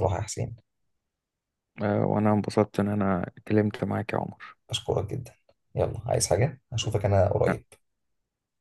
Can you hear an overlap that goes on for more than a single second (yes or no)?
no